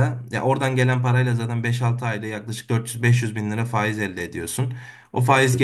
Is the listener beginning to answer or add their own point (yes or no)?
no